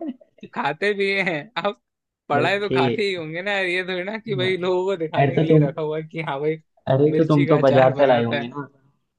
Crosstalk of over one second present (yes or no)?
yes